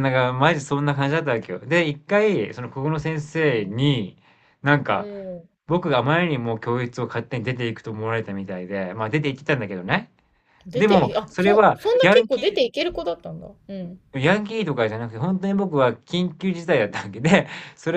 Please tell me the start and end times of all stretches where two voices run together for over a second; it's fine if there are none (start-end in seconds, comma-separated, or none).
10.7-12.6